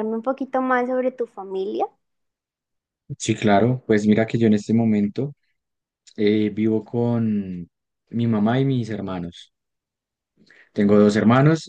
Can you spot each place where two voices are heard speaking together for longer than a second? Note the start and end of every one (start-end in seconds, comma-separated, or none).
none